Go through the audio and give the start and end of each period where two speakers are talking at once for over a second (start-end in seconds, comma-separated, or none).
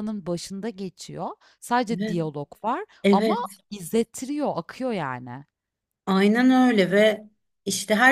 none